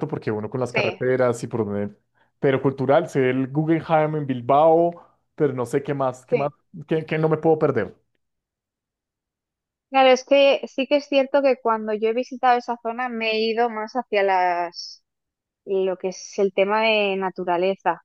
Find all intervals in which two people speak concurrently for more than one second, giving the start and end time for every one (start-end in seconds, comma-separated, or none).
none